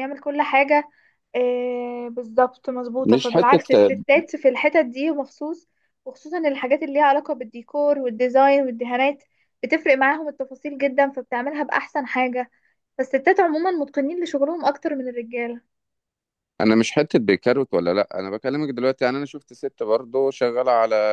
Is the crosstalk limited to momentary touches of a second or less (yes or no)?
yes